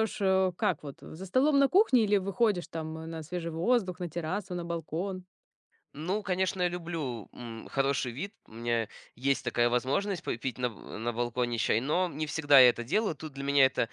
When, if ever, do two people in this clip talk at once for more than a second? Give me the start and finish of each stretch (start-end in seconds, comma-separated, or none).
none